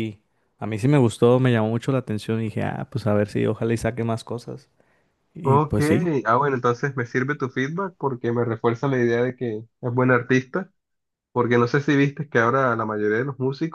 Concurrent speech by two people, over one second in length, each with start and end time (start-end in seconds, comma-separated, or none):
none